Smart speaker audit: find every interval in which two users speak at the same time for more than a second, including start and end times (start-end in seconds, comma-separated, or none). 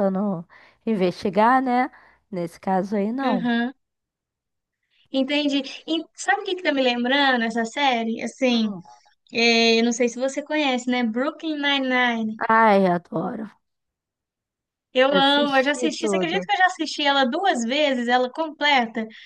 15.1-16.5